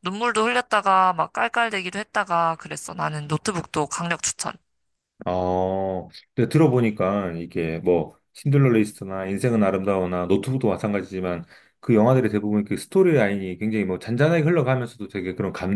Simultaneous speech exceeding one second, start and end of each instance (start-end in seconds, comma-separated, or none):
none